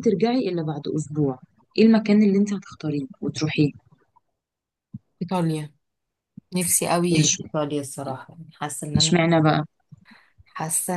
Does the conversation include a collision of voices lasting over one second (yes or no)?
no